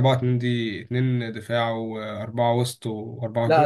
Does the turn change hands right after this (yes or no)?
yes